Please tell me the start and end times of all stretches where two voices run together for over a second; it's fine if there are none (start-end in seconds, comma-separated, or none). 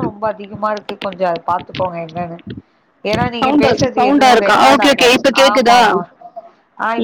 3.4-5.8